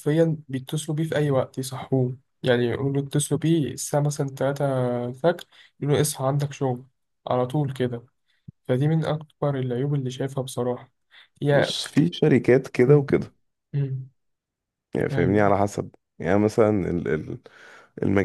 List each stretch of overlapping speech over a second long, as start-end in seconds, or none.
none